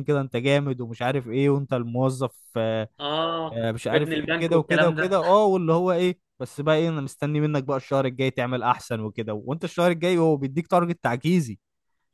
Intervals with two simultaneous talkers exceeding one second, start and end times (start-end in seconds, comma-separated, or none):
3.5-5.2